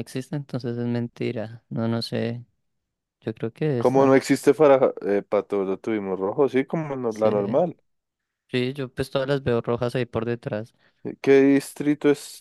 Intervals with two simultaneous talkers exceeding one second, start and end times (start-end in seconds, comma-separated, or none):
none